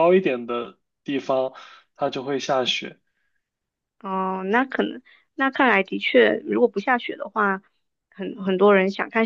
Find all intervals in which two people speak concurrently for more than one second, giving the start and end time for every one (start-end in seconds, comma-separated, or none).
none